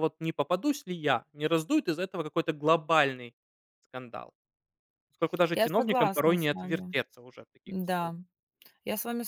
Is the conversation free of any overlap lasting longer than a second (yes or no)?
no